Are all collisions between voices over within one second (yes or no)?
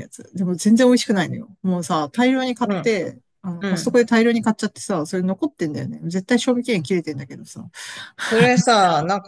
yes